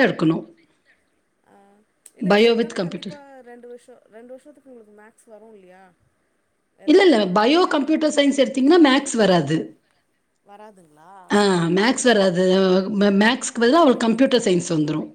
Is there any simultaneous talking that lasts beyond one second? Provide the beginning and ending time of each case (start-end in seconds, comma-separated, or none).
none